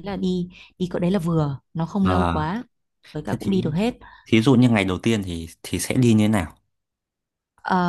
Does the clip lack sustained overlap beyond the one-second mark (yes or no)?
yes